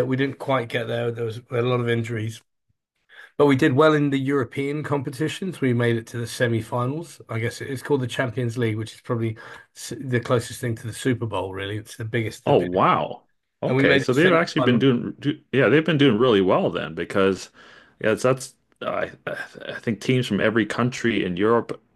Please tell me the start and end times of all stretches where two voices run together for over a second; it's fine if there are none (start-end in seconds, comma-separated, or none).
13.7-14.9